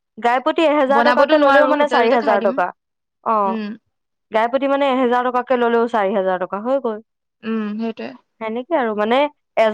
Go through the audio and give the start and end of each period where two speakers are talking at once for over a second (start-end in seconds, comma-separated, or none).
0.9-2.5